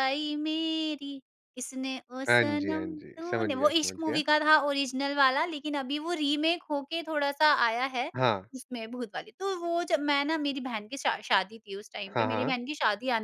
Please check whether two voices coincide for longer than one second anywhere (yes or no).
yes